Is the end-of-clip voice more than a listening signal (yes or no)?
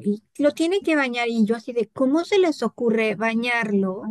no